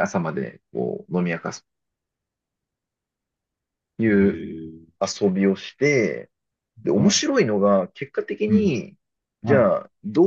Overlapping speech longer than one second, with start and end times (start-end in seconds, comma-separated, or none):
none